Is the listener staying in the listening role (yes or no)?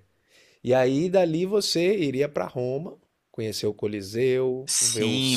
no